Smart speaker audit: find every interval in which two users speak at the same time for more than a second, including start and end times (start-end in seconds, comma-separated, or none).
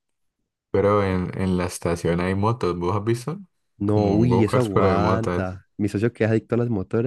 3.8-5.6